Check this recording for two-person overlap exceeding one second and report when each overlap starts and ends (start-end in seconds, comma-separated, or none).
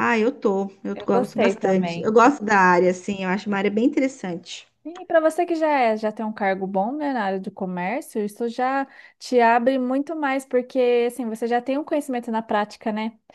0.9-2.6